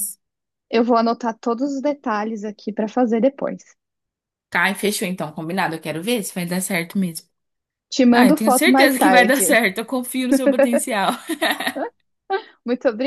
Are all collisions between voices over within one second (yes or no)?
no